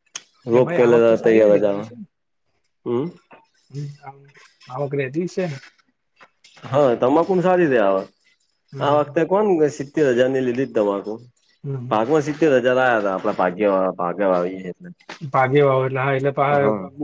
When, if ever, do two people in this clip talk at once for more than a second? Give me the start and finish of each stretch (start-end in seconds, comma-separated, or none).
none